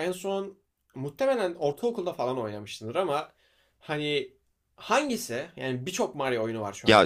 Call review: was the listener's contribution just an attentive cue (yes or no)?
no